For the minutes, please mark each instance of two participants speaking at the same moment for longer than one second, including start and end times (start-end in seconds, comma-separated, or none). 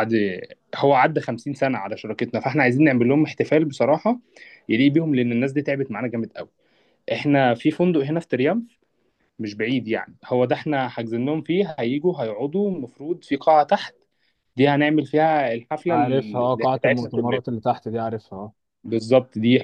15.9-17.4